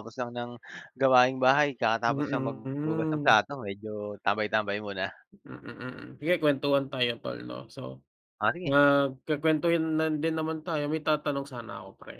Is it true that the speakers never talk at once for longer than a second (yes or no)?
no